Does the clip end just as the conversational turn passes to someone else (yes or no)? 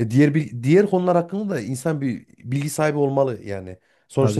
no